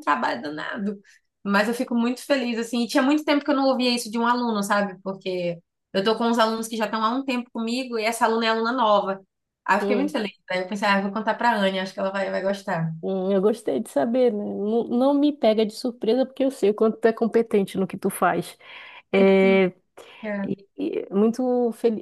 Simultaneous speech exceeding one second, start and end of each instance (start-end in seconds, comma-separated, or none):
none